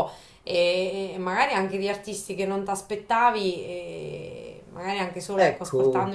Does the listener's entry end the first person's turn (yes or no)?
no